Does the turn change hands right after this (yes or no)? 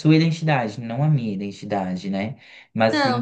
no